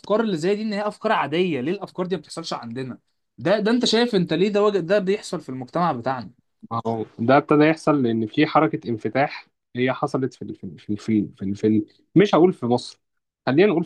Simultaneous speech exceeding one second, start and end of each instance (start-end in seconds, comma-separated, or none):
none